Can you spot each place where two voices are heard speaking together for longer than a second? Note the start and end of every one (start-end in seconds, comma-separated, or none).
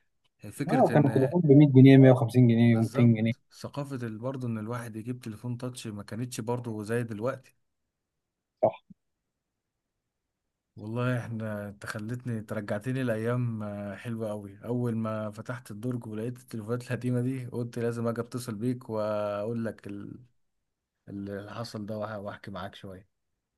none